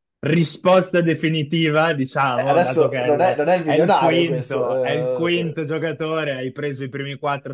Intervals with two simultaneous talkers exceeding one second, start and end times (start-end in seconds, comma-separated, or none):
2.3-4.7